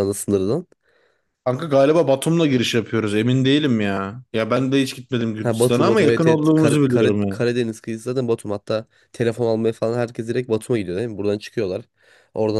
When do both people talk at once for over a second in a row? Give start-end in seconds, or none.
5.4-7.4